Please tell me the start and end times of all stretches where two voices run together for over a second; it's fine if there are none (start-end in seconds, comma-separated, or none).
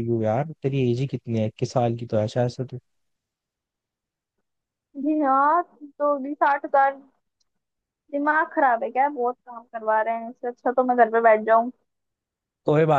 none